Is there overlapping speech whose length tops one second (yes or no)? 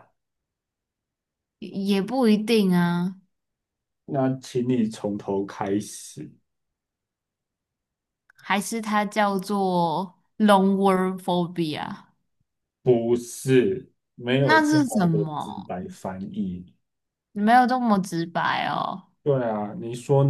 yes